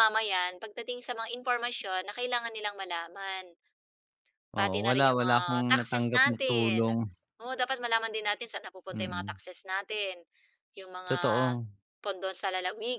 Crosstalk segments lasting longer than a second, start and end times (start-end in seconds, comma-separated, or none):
4.6-6.9